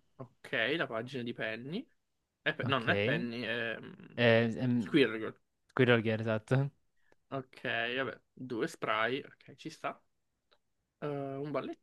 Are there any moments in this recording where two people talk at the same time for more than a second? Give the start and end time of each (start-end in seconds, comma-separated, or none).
none